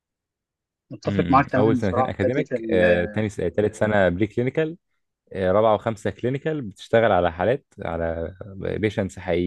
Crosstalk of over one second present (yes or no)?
yes